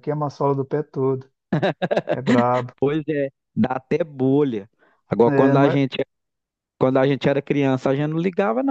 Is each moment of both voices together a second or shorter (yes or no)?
yes